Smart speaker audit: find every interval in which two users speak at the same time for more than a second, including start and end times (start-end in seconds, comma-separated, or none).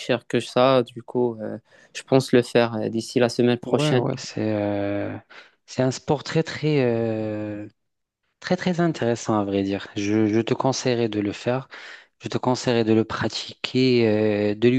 none